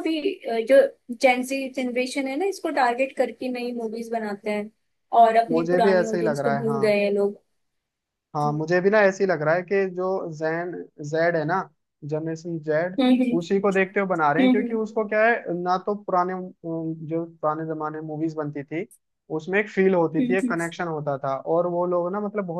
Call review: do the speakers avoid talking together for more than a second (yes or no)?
no